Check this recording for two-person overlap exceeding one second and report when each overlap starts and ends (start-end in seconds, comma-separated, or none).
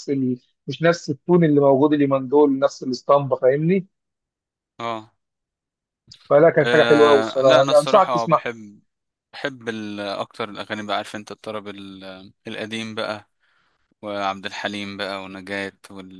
6.6-8.5